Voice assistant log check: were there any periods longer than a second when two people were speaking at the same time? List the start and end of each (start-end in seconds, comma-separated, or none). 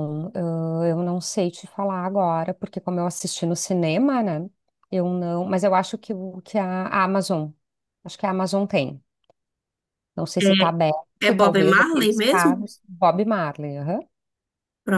11.2-12.7